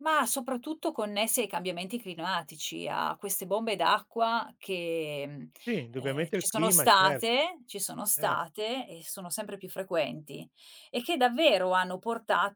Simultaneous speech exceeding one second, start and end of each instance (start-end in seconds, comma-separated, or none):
6.0-7.2